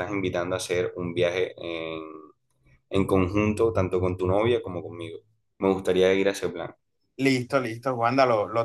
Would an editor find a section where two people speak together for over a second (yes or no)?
no